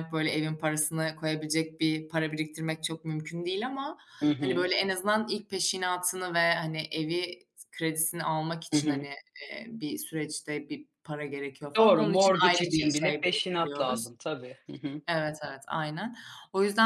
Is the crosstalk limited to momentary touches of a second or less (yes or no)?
no